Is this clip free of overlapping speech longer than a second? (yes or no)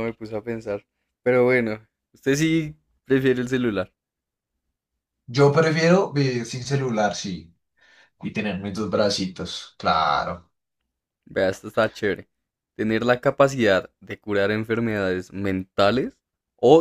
yes